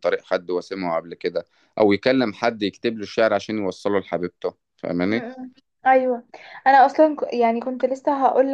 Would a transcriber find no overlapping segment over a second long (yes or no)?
yes